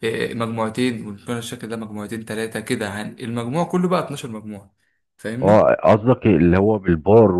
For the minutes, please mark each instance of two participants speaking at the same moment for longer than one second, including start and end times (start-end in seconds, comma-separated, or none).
none